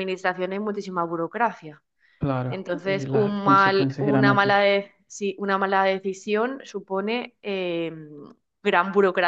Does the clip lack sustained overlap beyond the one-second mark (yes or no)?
no